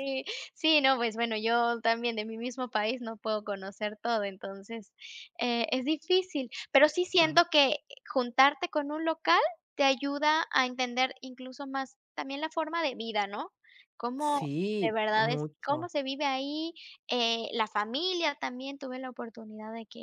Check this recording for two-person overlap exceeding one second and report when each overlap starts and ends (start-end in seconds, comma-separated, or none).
14.2-15.9